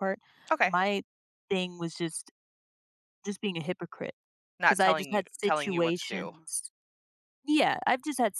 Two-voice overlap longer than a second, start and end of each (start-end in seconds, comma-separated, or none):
4.7-6.3